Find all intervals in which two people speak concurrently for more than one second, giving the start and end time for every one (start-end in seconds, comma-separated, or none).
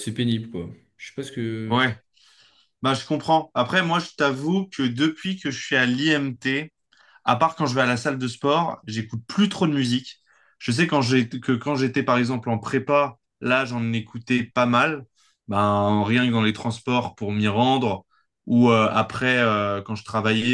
none